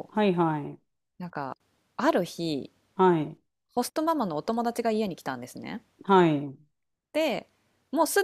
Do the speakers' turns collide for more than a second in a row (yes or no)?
no